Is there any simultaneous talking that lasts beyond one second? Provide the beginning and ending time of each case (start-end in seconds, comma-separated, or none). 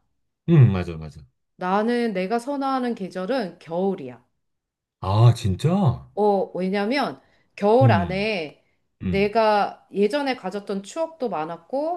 none